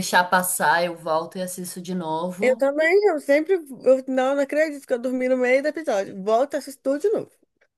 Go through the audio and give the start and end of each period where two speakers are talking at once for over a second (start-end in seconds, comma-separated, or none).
none